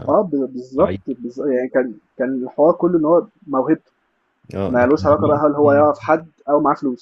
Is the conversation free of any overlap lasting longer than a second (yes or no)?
no